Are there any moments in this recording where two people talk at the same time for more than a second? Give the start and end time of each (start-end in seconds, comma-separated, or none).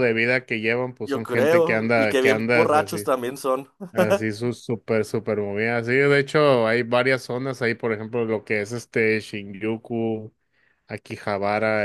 1.1-3.1